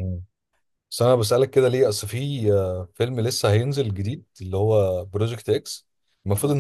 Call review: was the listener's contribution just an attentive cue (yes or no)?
yes